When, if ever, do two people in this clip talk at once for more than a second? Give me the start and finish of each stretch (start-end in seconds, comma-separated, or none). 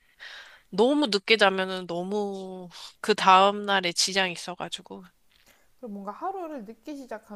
none